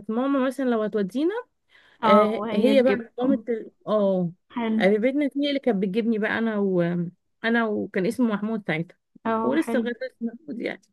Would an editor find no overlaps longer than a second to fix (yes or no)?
no